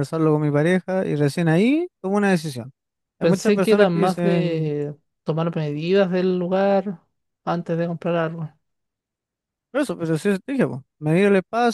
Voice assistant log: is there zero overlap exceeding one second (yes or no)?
no